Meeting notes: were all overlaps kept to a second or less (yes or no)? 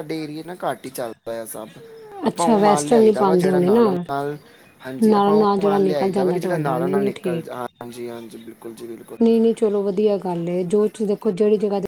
no